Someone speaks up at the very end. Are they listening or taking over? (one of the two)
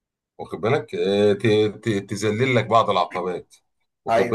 listening